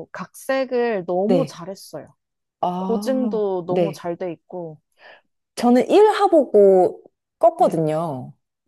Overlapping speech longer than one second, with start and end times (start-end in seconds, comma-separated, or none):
2.8-4.0